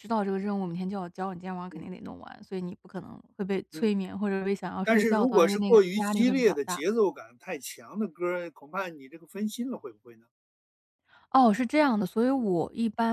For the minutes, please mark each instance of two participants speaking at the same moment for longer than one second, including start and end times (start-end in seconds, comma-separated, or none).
4.8-6.8